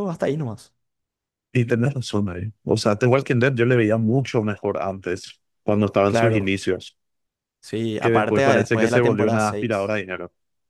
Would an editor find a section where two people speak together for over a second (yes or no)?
yes